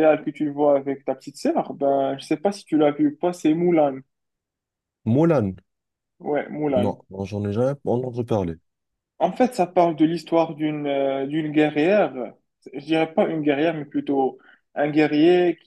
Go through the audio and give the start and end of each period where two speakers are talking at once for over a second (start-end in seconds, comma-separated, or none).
none